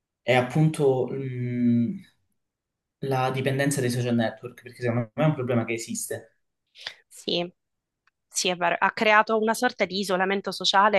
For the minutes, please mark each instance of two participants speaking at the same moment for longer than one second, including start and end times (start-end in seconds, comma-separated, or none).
none